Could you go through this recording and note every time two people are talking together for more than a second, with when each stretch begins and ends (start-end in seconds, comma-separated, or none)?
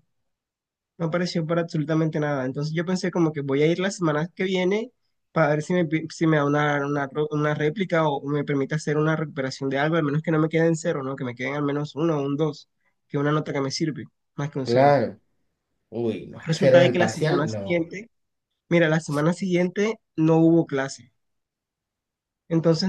16.4-17.9